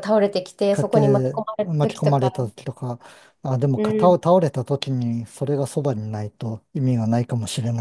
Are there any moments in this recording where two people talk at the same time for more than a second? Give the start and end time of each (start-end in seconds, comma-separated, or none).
0.7-2.3